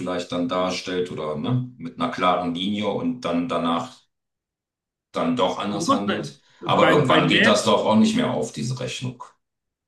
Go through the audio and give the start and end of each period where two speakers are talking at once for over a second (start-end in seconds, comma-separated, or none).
5.8-7.7